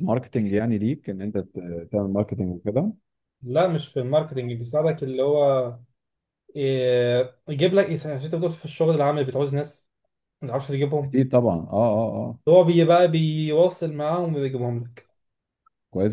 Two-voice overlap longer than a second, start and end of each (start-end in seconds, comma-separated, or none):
none